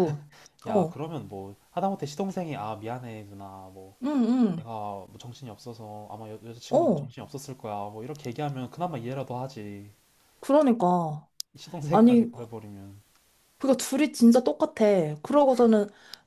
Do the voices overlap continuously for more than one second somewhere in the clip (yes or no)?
no